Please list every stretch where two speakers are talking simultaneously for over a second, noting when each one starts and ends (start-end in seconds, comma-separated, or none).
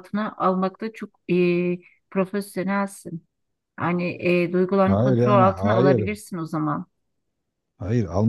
4.8-6.1